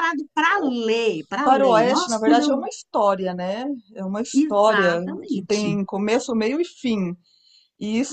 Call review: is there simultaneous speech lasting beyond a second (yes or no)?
yes